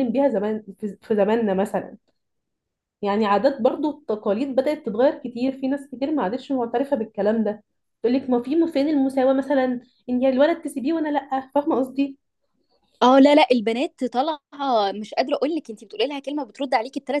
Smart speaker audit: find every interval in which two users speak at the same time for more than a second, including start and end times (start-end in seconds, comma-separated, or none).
none